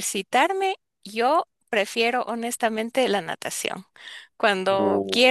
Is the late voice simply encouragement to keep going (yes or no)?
yes